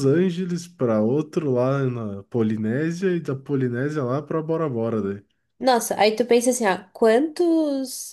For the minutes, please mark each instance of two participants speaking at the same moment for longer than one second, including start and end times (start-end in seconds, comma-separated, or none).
none